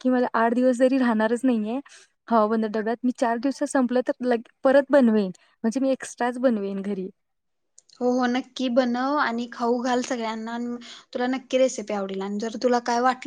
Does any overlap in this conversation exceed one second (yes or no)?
no